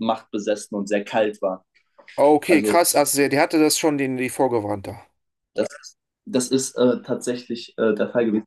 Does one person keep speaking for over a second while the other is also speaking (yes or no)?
no